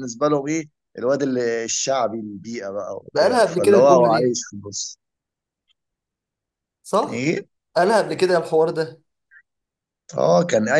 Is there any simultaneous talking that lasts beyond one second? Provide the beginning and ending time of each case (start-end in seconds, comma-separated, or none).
3.1-4.4